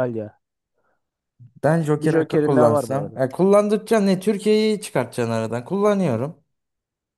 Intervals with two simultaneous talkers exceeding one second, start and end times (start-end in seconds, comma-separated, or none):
2.0-3.2